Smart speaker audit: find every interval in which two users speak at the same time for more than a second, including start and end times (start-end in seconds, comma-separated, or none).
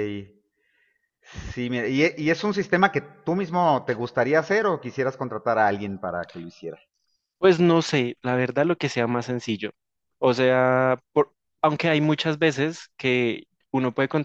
none